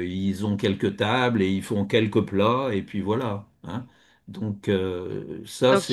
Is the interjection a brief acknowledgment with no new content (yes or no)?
no